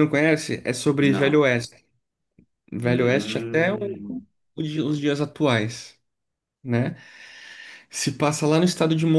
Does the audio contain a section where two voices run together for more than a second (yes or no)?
yes